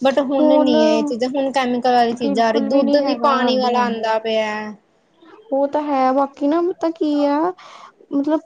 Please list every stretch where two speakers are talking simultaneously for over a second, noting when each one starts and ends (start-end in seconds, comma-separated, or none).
2.2-4.1